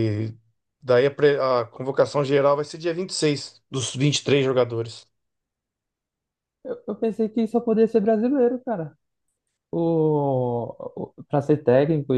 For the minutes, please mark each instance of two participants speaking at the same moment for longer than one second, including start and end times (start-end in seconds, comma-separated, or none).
none